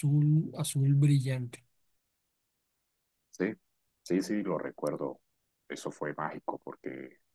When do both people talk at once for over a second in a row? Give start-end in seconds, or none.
none